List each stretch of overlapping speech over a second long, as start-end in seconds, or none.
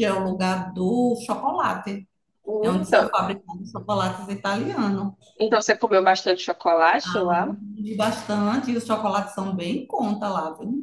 none